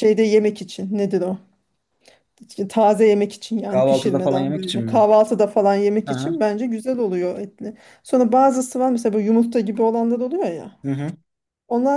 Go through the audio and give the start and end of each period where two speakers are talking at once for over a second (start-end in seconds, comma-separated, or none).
3.7-5.1